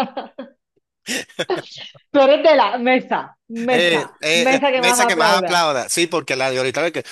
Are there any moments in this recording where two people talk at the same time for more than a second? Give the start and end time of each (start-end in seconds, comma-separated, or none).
3.7-5.7